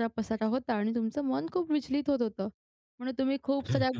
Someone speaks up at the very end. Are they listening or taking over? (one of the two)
listening